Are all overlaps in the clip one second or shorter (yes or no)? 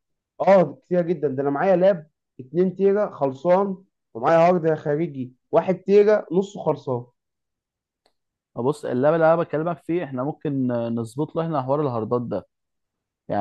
yes